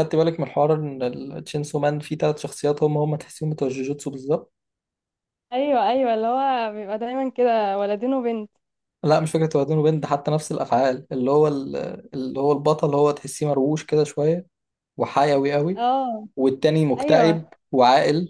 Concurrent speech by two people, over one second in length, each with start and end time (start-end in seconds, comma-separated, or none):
none